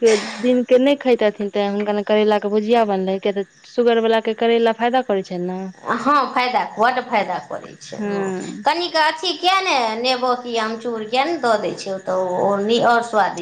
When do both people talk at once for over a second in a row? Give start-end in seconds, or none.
none